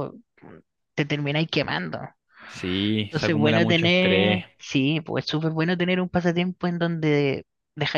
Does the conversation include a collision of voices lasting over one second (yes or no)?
yes